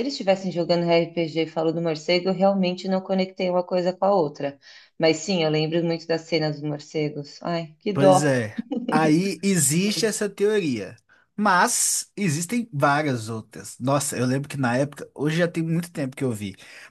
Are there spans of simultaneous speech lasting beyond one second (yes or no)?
no